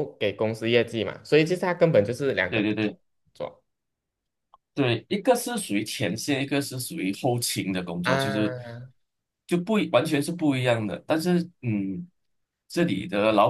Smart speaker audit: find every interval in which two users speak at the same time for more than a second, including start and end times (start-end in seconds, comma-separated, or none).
none